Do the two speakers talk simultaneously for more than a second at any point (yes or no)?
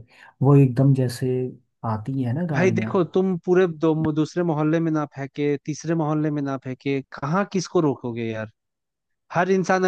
no